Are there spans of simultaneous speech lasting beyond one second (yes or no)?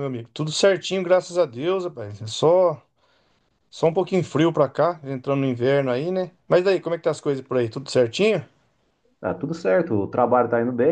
no